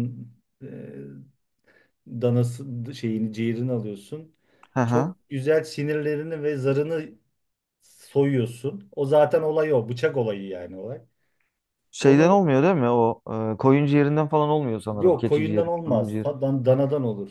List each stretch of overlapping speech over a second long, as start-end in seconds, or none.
14.9-16.3